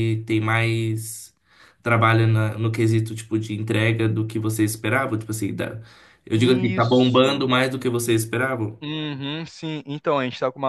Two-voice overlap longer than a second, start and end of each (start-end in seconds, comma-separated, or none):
6.3-7.5